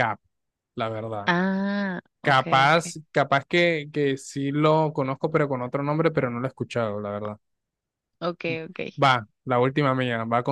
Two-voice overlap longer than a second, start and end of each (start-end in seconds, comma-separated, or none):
none